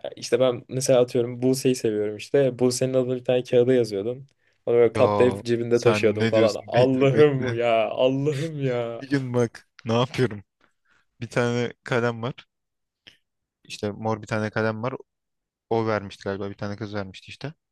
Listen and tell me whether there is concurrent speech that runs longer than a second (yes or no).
yes